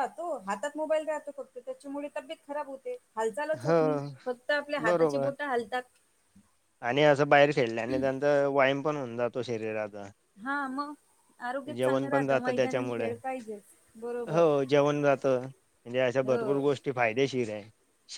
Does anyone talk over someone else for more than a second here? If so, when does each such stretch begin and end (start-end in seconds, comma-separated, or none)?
11.8-13.1